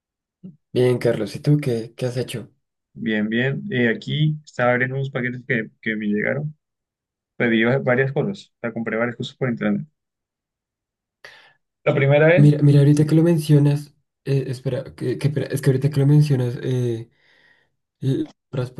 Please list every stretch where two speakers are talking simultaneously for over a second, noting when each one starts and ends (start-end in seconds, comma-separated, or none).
none